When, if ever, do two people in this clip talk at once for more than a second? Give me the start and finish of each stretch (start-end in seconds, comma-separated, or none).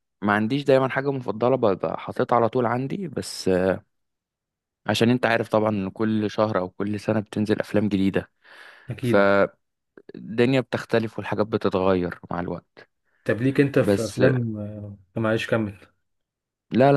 none